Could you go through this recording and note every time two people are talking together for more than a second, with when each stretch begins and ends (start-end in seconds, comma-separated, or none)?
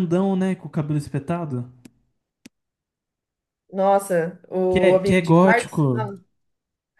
4.7-6.0